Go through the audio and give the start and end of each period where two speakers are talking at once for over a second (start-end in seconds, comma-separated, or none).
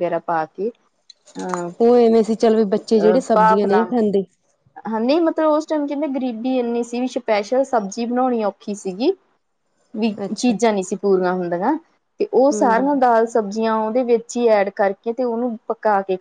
none